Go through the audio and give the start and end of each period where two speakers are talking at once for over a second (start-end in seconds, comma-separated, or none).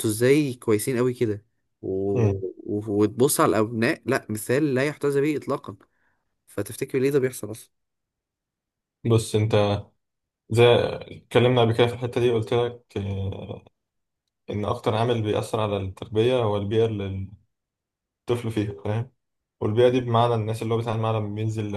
none